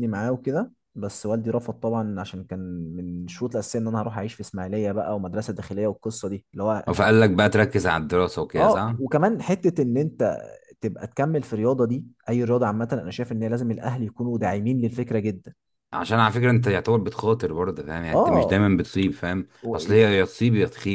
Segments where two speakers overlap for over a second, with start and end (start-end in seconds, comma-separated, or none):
none